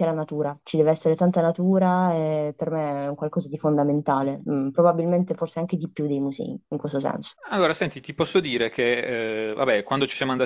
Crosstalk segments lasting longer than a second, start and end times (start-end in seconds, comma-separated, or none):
none